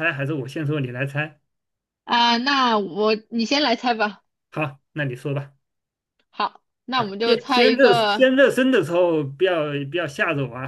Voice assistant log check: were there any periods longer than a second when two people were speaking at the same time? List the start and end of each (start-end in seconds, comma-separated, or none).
7.0-8.3